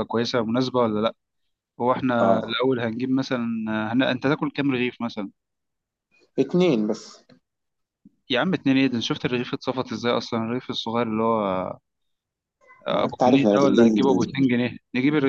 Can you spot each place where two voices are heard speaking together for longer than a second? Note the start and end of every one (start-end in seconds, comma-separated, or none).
12.9-14.3